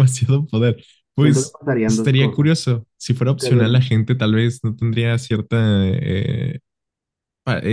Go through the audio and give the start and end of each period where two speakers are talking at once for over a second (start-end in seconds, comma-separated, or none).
1.2-2.7